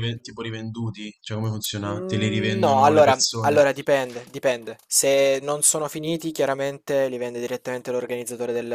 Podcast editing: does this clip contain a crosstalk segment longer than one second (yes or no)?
yes